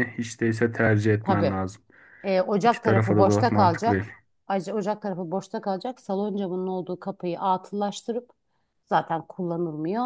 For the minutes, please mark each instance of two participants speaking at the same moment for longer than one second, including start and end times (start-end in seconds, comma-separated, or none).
2.6-4.1